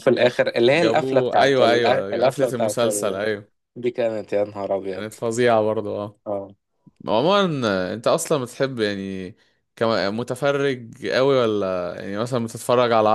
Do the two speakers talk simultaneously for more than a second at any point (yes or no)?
yes